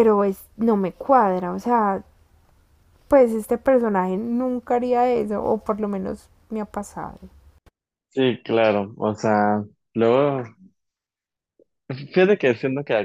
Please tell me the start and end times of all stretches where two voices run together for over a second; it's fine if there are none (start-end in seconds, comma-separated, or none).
none